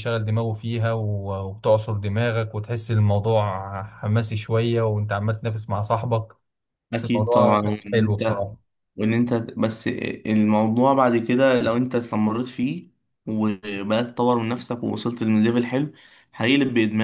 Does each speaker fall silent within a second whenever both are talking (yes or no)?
no